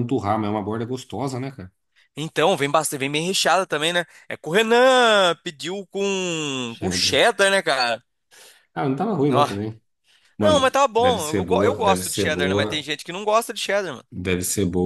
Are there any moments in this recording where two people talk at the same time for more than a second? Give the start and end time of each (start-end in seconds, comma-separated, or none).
10.4-12.9